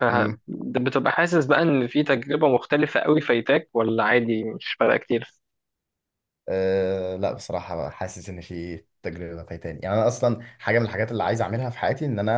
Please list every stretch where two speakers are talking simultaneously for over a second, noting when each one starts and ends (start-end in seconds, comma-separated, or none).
none